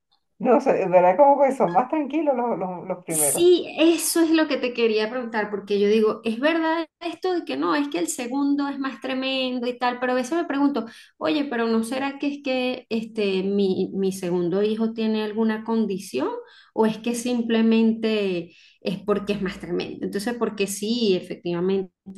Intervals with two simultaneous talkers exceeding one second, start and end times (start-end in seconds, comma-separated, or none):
none